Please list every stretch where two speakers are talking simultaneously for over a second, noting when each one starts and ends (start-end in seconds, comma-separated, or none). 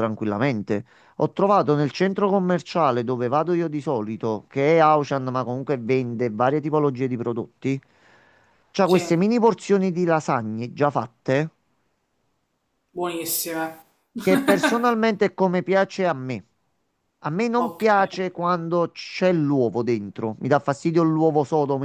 none